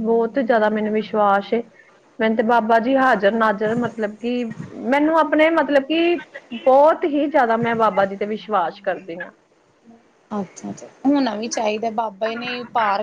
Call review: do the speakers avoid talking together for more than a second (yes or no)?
yes